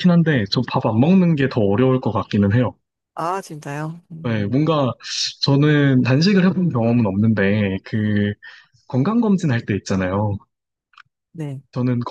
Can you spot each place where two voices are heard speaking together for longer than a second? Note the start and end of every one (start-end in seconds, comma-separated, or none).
none